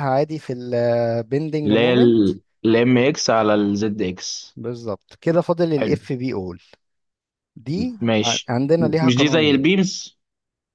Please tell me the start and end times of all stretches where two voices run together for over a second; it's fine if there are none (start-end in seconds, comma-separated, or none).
8.0-9.7